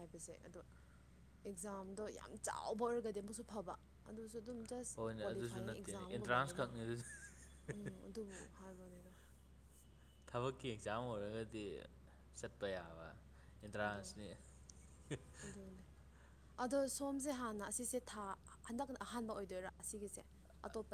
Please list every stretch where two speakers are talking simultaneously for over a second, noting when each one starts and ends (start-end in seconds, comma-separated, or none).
5.0-6.7